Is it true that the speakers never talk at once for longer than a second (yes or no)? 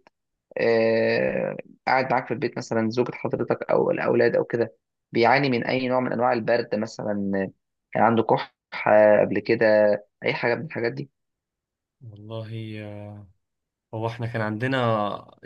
yes